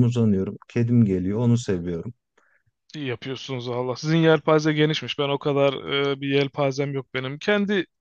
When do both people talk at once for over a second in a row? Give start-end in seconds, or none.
none